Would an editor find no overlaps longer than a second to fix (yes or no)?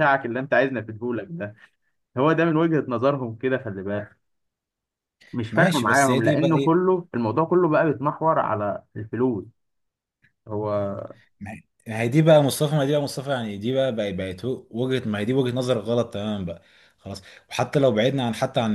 no